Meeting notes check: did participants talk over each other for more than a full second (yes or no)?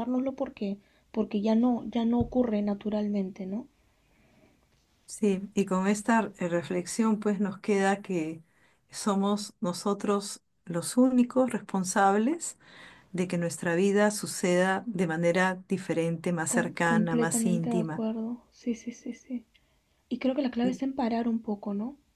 yes